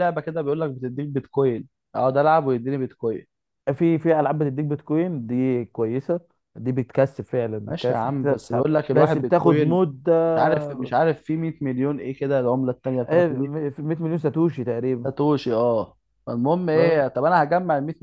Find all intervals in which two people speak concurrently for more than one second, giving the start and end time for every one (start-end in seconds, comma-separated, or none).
7.7-9.8